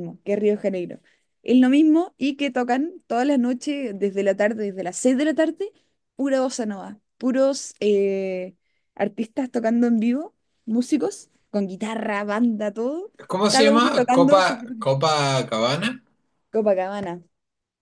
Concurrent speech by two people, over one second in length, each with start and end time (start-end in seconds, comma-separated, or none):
13.5-14.9